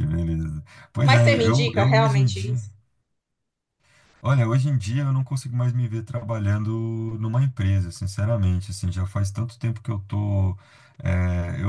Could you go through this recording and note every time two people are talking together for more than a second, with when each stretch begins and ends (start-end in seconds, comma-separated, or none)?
1.0-2.5